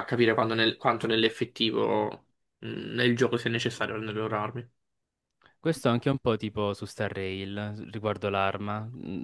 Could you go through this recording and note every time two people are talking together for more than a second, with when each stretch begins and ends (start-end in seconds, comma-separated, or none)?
none